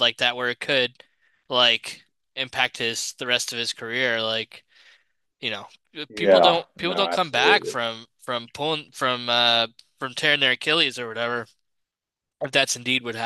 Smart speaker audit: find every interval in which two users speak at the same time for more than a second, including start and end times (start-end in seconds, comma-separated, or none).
6.1-7.7